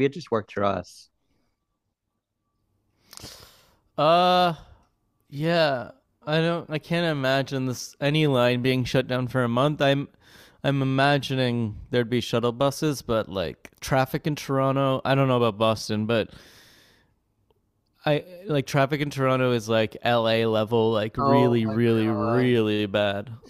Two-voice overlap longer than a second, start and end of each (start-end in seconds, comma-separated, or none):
21.2-22.6